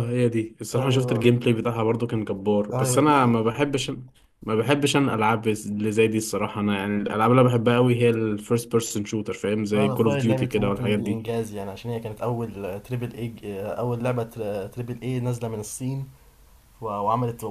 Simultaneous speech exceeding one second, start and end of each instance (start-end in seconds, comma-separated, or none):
9.7-11.2